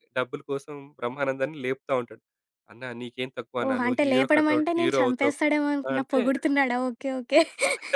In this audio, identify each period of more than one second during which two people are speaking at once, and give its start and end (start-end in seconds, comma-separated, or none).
3.6-5.3